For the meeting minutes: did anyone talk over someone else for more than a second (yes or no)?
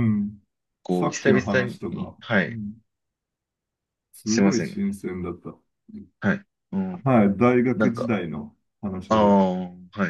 yes